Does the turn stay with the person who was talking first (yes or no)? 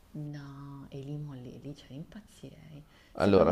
no